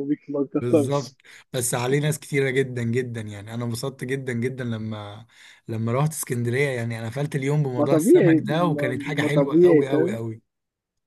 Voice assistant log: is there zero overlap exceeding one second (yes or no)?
no